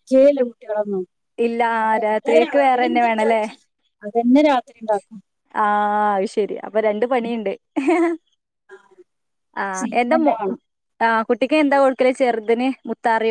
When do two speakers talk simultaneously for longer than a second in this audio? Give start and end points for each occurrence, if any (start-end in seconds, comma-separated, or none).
2.0-3.4